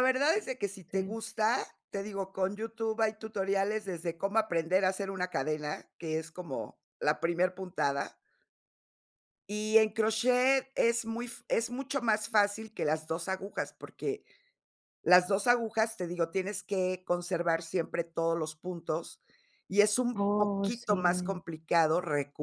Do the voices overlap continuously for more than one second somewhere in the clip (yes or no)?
yes